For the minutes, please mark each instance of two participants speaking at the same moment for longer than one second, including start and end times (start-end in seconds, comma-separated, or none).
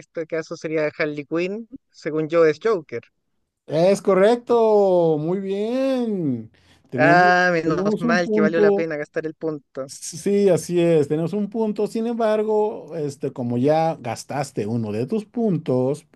7.0-8.9